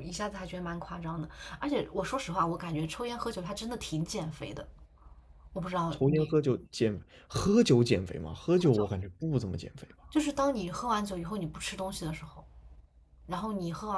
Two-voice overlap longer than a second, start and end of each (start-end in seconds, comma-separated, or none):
none